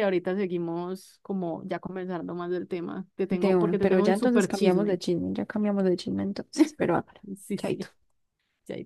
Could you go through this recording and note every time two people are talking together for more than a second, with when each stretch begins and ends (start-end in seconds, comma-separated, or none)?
3.3-5.0